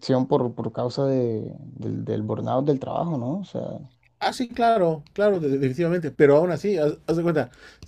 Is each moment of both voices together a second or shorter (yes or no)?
yes